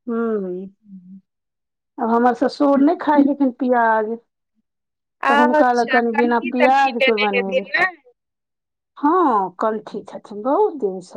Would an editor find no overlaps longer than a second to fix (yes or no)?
no